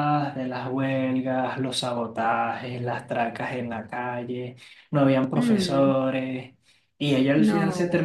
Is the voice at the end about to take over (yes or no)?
no